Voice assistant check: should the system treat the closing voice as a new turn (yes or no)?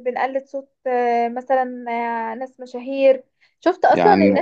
no